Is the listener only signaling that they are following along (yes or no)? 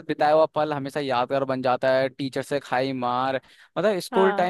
yes